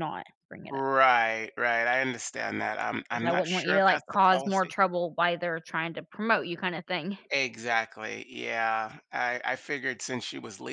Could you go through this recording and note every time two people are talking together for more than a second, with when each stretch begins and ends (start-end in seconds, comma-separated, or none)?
3.1-4.8